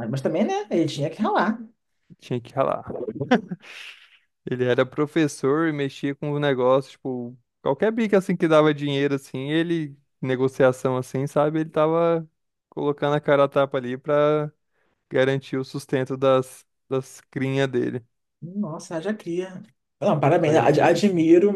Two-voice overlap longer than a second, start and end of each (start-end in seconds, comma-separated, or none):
none